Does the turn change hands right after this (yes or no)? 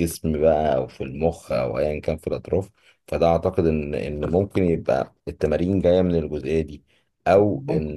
no